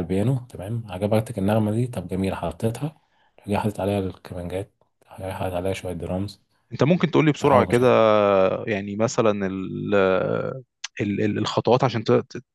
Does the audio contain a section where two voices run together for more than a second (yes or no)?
no